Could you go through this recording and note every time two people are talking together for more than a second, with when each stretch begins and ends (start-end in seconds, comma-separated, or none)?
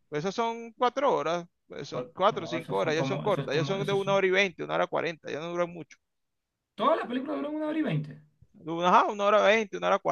1.9-4.2